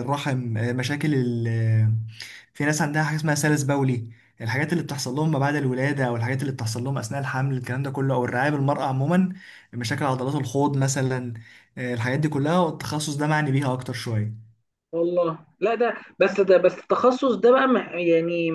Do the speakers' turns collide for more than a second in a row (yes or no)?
no